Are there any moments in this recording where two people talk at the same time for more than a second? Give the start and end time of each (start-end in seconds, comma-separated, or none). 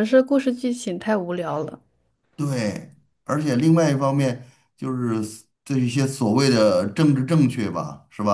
none